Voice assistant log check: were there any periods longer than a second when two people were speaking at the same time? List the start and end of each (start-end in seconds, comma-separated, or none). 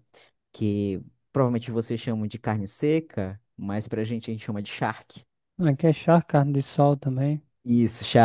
none